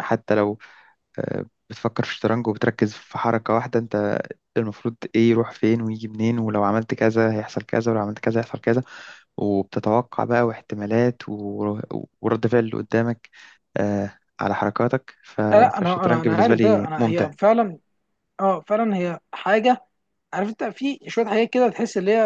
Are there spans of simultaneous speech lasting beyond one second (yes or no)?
yes